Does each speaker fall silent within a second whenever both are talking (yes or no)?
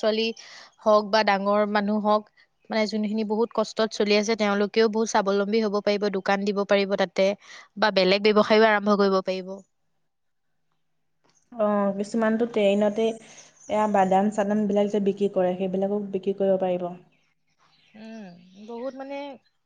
yes